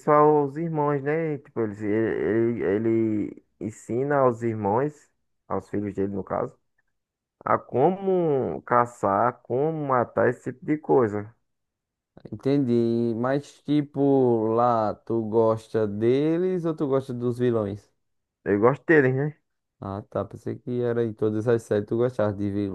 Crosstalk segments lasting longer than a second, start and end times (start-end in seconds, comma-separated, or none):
none